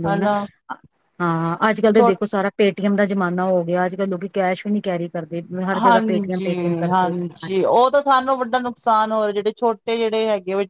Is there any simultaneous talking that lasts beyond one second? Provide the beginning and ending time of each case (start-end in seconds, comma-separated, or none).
5.8-7.2